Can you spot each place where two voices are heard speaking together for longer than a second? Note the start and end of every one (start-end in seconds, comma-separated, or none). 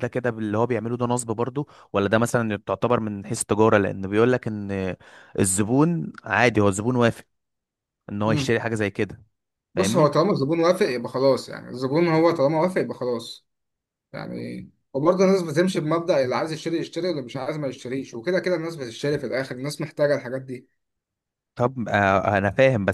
none